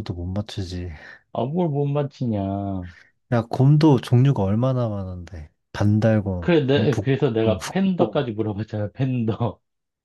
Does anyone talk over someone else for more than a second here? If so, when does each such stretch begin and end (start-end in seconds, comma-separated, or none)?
6.4-8.3